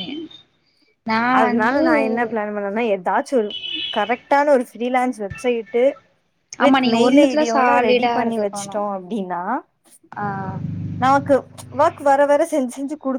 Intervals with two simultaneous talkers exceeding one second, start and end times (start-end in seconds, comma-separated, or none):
6.7-8.8